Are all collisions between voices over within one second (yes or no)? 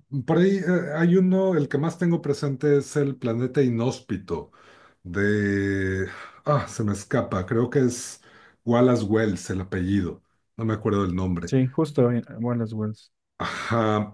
yes